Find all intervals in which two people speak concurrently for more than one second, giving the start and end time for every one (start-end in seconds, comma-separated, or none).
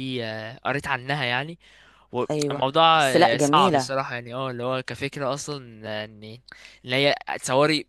2.3-4.0